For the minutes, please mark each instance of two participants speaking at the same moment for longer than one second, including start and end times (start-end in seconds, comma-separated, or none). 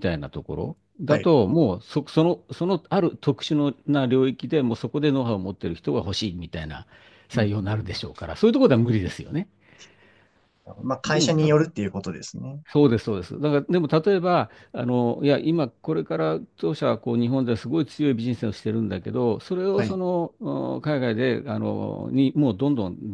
none